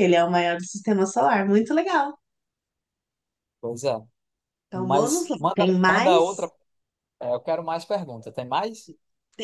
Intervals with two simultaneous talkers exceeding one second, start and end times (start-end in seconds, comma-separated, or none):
4.7-6.5